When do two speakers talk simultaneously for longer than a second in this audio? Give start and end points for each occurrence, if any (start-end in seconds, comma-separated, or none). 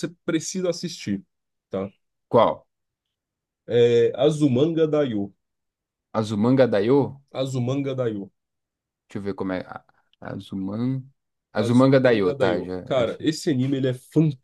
11.6-13.3